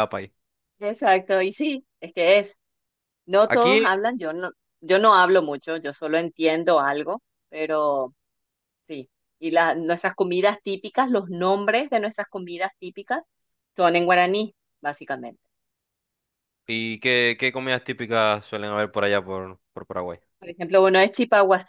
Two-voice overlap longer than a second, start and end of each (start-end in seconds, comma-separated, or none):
none